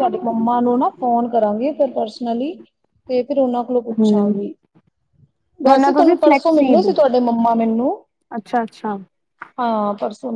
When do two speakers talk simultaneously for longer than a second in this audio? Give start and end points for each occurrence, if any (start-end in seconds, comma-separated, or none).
5.7-6.9